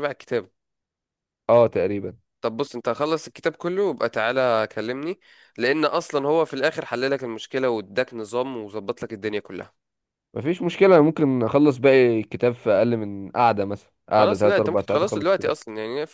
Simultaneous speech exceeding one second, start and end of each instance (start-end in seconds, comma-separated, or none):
14.1-15.6